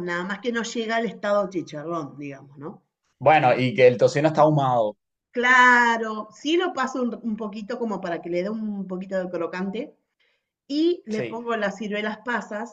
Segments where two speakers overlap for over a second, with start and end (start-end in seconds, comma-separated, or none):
none